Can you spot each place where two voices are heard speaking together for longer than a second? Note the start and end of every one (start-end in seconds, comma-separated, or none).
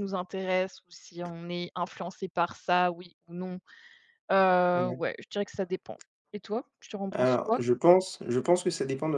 none